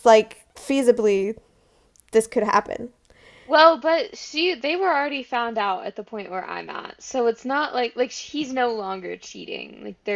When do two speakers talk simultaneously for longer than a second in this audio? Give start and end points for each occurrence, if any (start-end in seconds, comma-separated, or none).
none